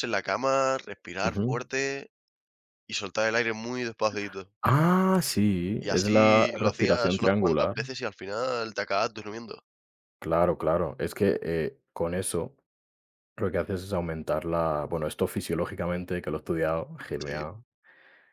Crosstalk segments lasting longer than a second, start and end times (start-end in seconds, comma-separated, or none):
5.8-7.7